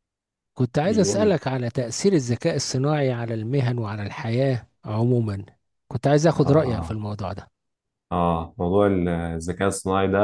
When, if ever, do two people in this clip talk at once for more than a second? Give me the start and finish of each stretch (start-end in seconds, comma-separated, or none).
none